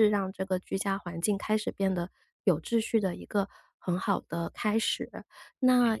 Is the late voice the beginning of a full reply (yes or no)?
no